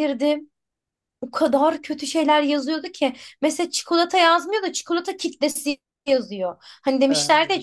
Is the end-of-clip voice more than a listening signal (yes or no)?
no